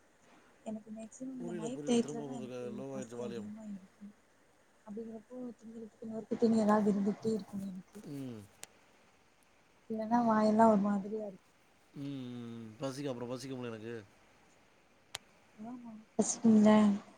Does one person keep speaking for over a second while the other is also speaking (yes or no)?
yes